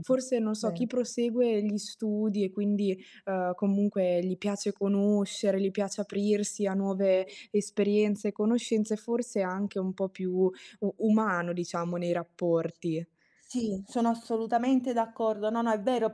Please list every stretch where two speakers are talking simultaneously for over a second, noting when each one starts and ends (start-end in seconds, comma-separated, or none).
none